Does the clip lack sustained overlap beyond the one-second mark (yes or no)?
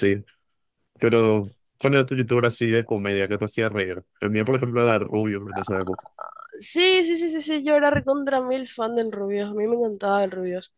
yes